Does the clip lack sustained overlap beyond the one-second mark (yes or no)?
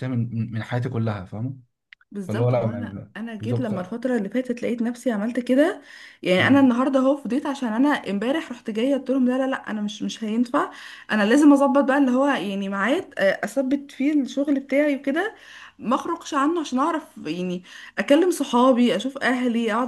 no